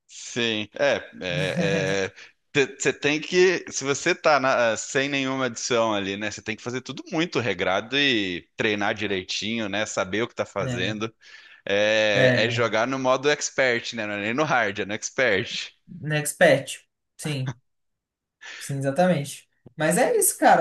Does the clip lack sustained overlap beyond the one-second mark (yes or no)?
yes